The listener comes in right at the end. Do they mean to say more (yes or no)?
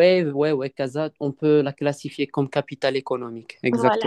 yes